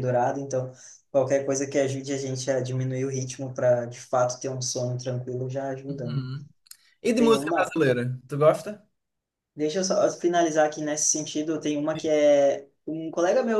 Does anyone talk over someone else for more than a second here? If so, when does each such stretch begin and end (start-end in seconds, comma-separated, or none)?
none